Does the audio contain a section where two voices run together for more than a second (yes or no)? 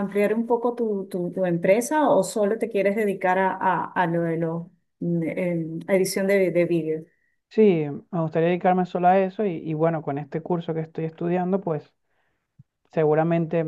no